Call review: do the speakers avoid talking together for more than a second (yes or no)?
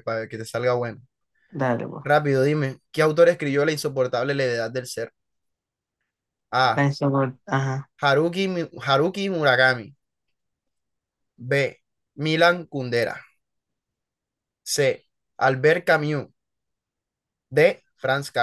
yes